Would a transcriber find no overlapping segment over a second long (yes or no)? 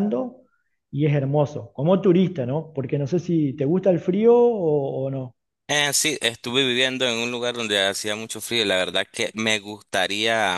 yes